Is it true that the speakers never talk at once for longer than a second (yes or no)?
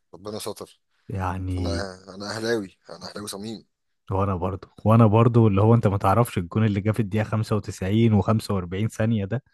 yes